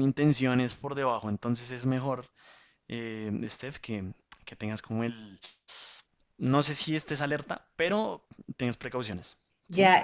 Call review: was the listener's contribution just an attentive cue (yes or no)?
no